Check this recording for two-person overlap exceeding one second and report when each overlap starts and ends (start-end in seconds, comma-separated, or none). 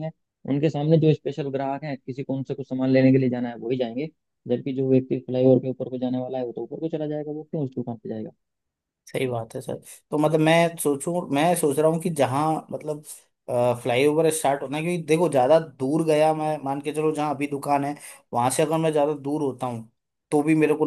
none